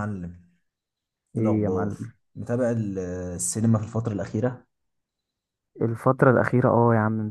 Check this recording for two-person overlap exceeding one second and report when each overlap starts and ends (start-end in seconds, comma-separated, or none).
none